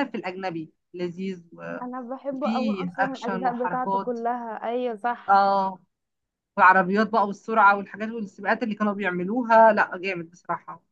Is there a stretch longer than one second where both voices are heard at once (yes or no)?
yes